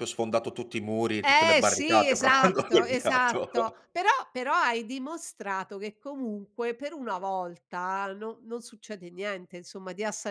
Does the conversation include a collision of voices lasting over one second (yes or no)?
yes